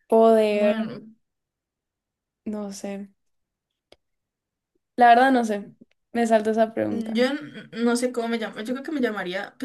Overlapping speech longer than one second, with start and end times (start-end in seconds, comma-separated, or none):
none